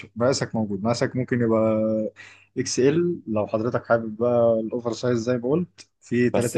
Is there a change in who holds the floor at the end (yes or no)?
yes